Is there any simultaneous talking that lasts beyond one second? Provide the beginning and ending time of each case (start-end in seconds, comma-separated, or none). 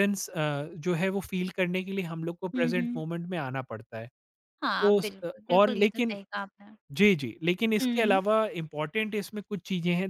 4.6-6.2